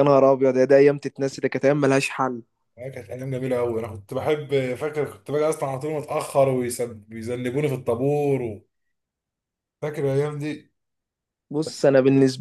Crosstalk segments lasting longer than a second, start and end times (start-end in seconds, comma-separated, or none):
none